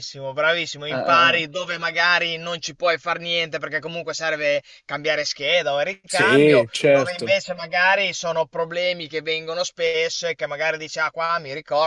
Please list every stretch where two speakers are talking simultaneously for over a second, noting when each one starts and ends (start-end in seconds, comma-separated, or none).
6.1-7.3